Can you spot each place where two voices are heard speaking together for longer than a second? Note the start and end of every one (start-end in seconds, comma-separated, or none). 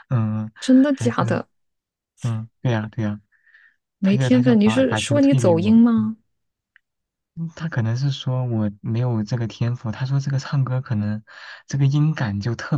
4.0-5.8